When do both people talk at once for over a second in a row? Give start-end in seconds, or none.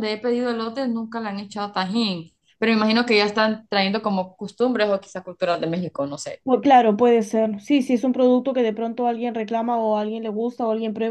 none